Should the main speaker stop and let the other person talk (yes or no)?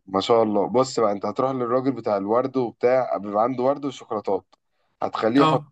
no